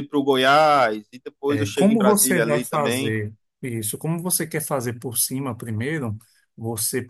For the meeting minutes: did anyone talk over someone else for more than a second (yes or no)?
yes